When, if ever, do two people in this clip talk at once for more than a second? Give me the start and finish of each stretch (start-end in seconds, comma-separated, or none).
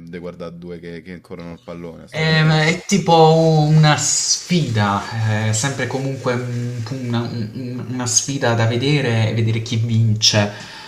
none